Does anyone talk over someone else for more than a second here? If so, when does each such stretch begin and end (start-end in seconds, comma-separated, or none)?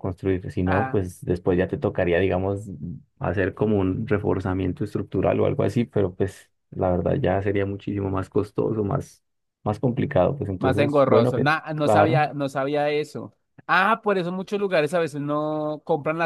10.6-12.2